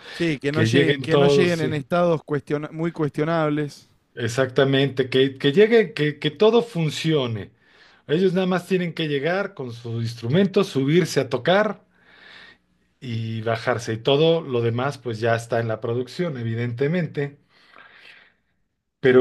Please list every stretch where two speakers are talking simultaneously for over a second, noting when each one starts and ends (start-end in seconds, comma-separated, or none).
0.5-1.8